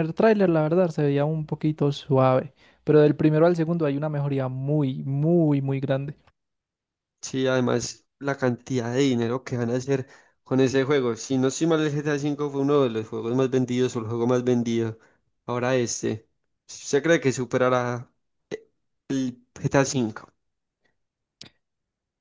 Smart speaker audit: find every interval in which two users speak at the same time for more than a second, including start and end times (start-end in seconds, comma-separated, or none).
none